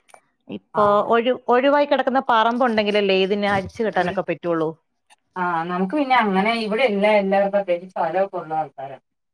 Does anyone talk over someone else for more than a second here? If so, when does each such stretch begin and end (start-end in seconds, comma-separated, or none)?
none